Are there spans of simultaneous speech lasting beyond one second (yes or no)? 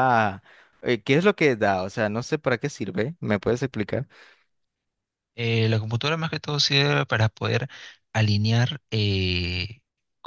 no